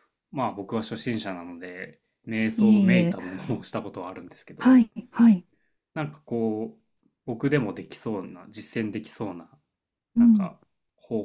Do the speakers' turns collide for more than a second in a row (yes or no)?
no